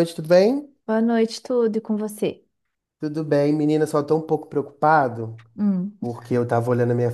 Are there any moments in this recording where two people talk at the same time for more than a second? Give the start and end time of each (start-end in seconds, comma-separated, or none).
none